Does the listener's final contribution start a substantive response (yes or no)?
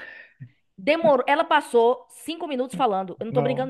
yes